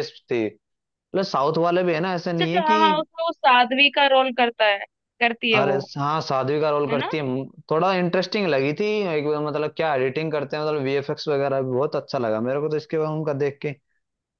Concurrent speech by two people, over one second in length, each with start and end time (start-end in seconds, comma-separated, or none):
none